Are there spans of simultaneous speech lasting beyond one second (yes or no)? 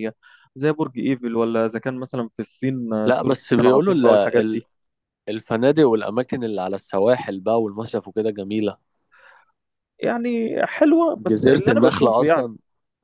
yes